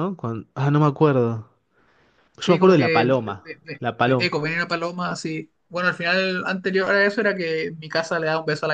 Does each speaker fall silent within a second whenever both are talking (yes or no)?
no